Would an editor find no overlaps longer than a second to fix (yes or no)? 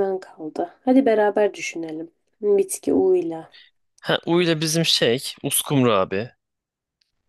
yes